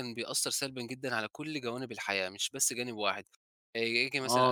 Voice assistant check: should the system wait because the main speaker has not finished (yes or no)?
no